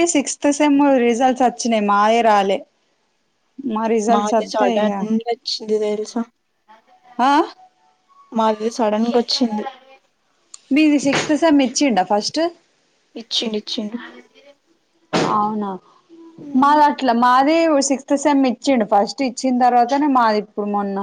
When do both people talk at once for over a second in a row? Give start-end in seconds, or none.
none